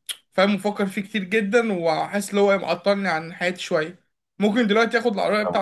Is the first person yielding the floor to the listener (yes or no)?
no